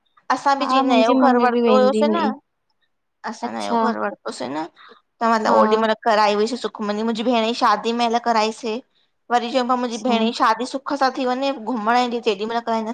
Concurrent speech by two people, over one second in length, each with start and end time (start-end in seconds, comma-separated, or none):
0.6-2.2